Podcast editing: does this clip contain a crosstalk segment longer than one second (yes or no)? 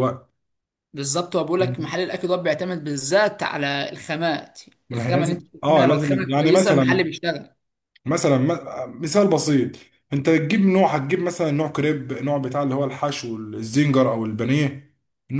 yes